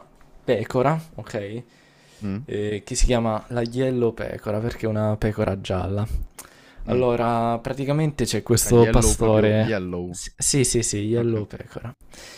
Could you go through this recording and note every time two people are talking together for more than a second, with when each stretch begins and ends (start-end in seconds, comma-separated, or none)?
8.6-10.2